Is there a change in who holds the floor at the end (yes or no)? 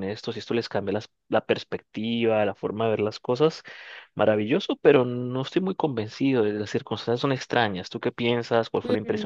yes